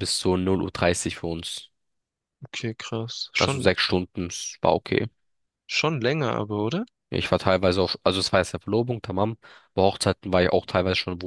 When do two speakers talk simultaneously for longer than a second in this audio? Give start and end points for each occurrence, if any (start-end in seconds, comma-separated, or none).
none